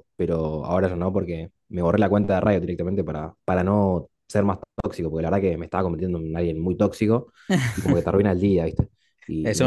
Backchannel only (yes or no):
no